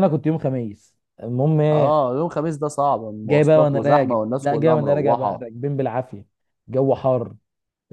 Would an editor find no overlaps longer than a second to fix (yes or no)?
no